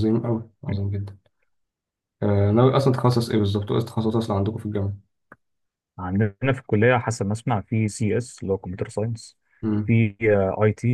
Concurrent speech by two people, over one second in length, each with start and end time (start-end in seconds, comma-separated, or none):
none